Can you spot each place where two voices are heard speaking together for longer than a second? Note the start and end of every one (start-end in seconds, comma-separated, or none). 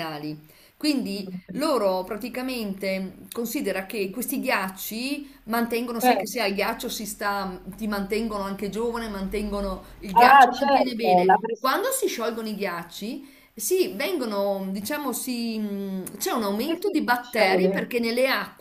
10.1-11.7, 16.6-17.9